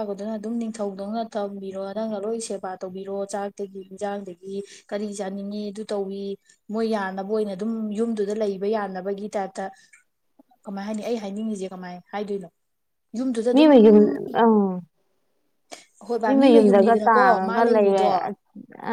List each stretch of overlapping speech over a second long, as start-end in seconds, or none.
16.2-18.1